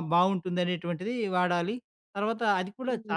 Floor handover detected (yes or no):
no